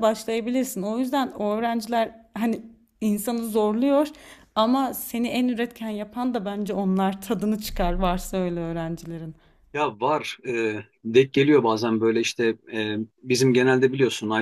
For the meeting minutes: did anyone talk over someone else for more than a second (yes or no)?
no